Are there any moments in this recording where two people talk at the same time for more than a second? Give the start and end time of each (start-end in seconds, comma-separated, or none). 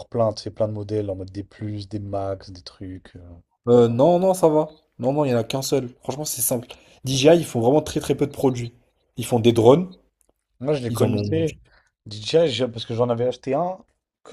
none